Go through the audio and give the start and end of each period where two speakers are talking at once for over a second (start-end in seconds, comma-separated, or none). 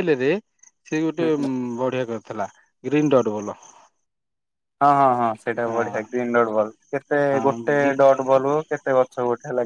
none